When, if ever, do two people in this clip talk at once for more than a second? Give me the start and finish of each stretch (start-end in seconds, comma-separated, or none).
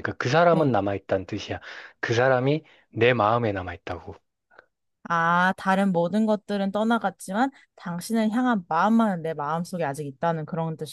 none